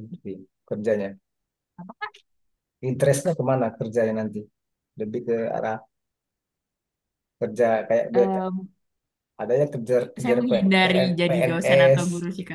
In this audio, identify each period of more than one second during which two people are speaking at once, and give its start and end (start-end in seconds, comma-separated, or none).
10.2-12.0